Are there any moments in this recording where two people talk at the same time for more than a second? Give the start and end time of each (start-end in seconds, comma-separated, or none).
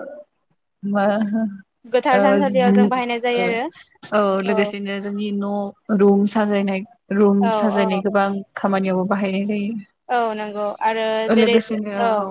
2.2-3.4